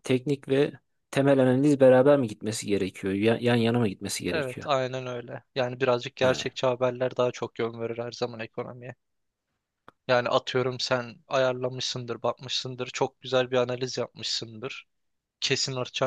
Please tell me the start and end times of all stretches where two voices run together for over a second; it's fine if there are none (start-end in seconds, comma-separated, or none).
none